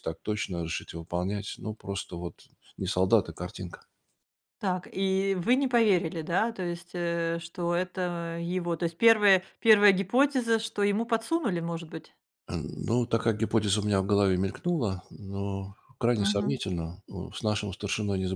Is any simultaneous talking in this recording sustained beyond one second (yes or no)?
no